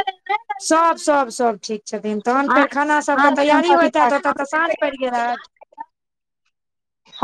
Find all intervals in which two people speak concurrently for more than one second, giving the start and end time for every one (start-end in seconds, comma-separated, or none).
2.5-4.1